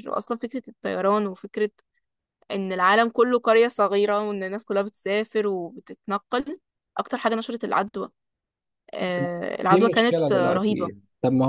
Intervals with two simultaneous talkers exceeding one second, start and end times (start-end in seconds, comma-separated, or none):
9.7-10.9